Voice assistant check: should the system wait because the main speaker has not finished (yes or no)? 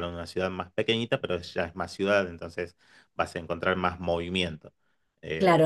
no